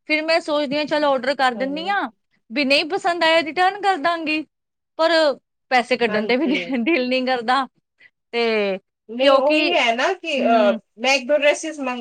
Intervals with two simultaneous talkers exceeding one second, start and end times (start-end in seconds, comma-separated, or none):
none